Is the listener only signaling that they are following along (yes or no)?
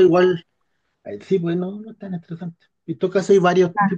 yes